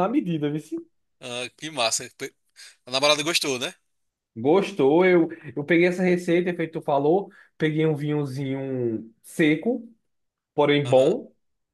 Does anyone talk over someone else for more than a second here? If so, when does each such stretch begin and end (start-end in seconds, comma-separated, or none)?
none